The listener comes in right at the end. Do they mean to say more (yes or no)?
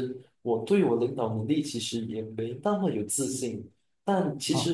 no